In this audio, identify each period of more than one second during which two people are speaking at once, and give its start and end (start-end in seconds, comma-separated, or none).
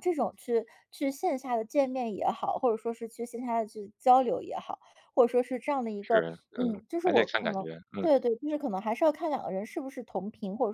6.0-8.1